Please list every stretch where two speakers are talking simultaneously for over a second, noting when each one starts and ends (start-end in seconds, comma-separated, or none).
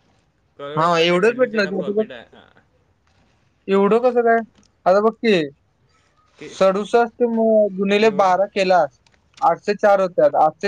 0.8-2.1